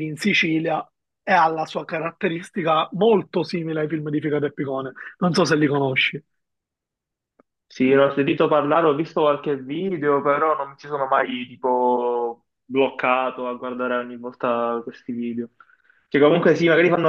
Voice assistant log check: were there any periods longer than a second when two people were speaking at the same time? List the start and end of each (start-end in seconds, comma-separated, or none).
none